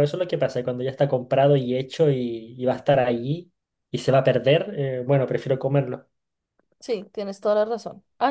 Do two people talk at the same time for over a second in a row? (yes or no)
no